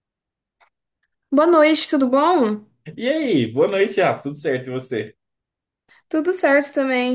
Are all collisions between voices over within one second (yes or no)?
yes